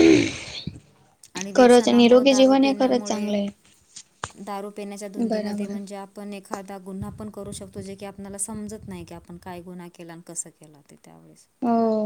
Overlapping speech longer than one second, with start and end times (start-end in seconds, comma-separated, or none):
1.6-3.2